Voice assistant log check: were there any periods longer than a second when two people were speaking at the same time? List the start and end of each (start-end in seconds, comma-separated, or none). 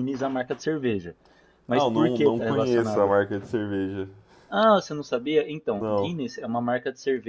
1.7-3.1